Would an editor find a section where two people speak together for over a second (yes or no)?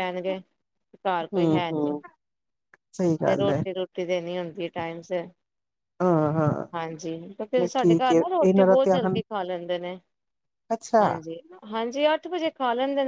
yes